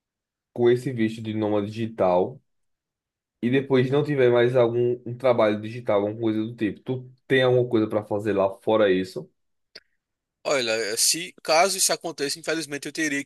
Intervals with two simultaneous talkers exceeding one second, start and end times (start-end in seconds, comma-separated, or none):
none